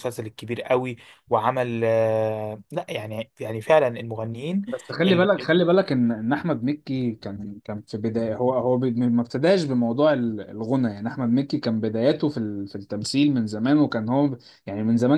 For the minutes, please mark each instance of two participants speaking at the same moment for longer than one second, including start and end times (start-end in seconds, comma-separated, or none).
none